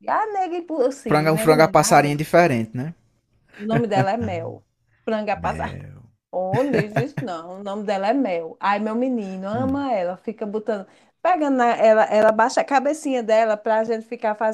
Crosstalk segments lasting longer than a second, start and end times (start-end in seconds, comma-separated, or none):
1.1-2.3